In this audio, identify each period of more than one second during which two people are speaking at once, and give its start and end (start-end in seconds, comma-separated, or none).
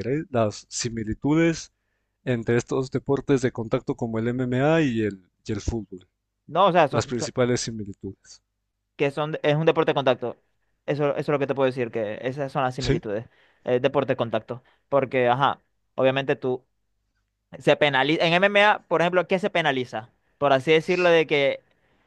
none